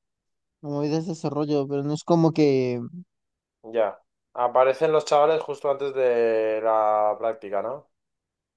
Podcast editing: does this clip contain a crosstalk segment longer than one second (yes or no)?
no